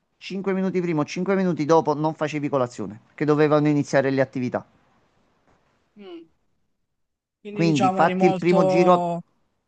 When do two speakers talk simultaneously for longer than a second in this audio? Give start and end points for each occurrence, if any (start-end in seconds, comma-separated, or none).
7.5-9.1